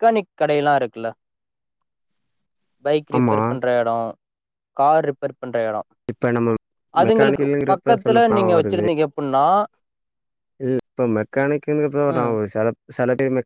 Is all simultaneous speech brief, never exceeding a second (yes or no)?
no